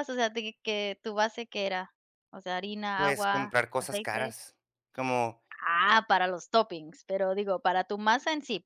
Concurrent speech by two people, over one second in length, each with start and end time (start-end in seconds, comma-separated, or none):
3.0-4.3